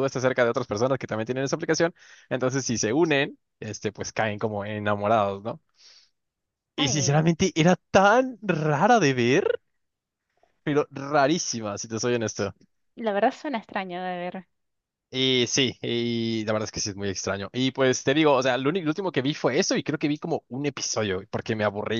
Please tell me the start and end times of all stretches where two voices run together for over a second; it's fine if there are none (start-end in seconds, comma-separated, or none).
none